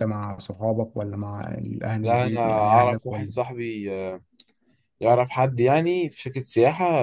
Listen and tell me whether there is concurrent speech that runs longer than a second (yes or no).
yes